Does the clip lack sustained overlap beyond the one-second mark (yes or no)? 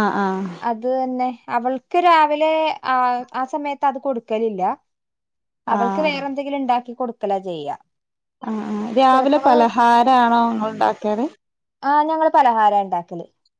yes